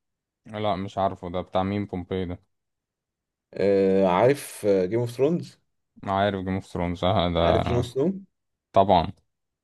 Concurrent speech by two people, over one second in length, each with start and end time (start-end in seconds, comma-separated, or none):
none